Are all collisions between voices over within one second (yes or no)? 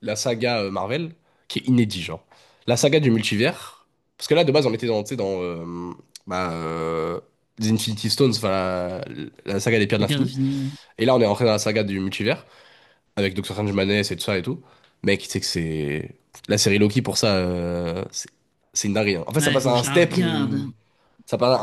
no